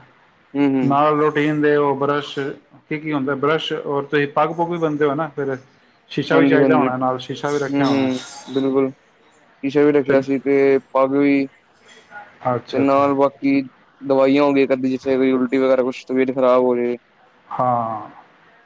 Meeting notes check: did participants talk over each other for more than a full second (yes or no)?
no